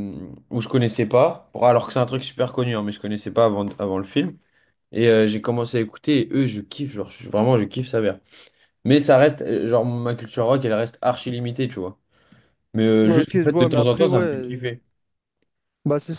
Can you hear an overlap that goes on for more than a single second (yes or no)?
yes